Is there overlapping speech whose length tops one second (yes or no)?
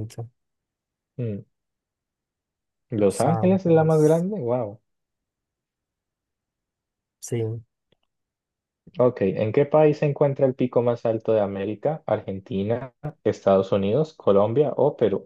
yes